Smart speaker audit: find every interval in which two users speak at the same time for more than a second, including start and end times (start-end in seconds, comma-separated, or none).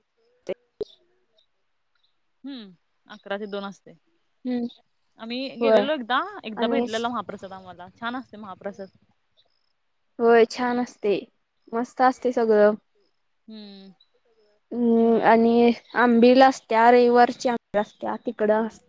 none